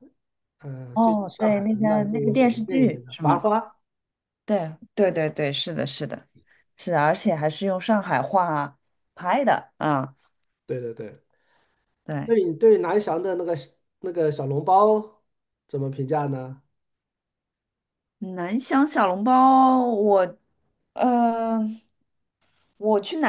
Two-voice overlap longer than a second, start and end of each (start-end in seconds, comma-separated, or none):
0.9-3.4